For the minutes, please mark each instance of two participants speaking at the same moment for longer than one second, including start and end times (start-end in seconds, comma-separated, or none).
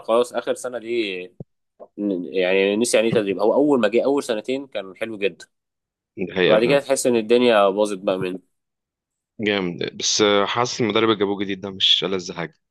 none